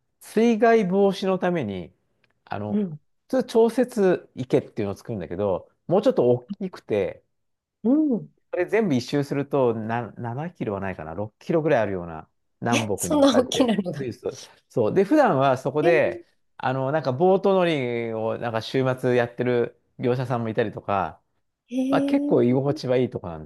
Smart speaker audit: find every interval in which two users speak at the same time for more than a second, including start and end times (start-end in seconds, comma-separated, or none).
12.7-14.1